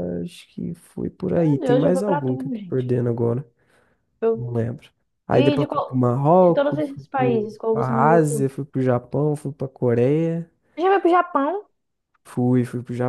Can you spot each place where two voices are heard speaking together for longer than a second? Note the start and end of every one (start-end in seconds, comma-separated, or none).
1.3-2.9, 5.3-8.5